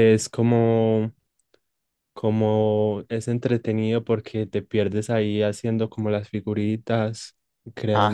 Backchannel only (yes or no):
no